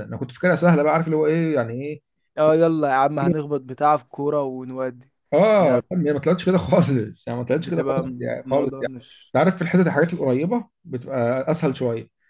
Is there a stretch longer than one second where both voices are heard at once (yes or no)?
yes